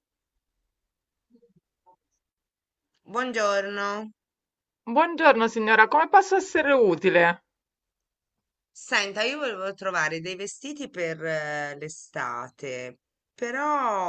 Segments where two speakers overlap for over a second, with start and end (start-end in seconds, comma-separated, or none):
none